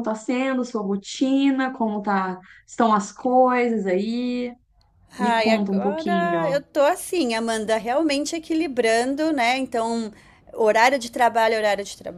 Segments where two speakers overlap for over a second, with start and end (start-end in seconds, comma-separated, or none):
5.2-6.6